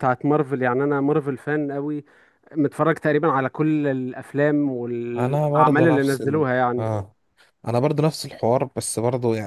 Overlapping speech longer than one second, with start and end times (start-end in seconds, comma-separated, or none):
5.2-6.9